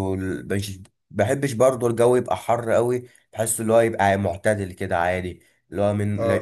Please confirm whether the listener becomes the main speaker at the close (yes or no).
no